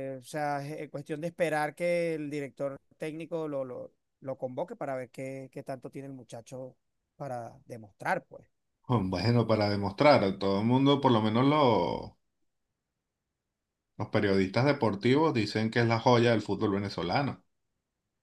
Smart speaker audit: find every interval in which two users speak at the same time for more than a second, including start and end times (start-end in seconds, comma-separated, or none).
none